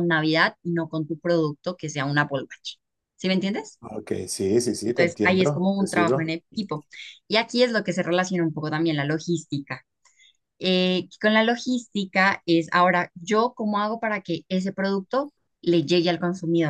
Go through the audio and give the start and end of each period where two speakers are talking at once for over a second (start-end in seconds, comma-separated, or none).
4.9-6.3